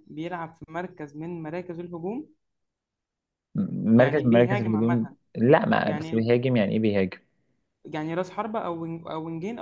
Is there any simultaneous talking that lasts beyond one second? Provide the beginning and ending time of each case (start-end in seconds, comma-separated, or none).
4.0-5.2